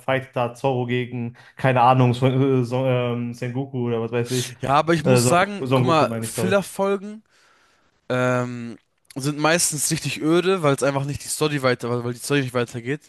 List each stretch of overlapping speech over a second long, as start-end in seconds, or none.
5.0-6.5